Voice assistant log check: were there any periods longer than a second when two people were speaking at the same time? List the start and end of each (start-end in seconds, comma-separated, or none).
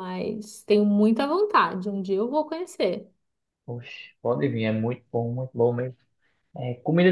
none